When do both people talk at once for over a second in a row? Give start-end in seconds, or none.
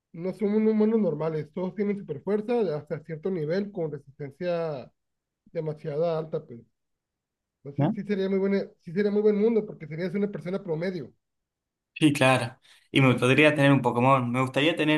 none